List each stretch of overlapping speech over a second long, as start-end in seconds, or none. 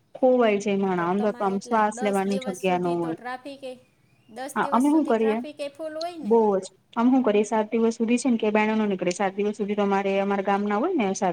1.2-3.2